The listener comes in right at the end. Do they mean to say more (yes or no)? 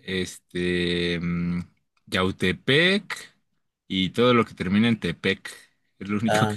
yes